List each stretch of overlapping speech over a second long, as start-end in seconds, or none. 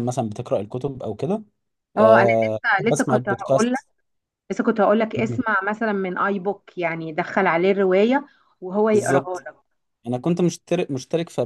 2.0-3.8